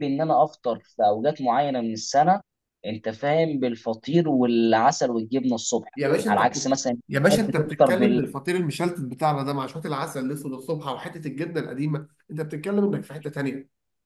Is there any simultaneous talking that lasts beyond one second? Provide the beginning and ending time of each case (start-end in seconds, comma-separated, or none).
6.3-7.9